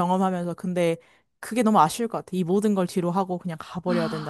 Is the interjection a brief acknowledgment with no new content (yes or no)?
no